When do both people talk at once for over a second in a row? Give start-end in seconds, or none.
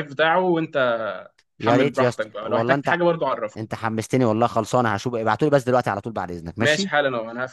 1.6-3.0